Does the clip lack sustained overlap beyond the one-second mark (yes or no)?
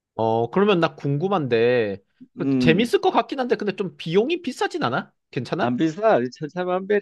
yes